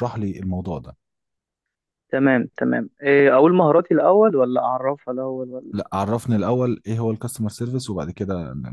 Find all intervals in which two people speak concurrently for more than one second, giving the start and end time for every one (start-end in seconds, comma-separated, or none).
none